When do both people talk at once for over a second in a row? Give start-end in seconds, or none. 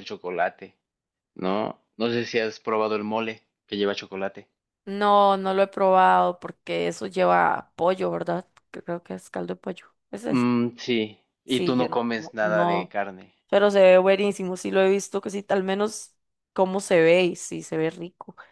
11.4-12.9